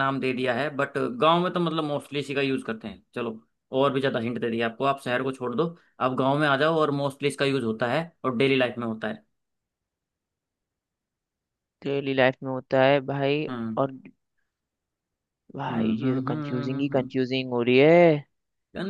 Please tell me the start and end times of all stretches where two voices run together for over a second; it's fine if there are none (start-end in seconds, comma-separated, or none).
15.7-17.1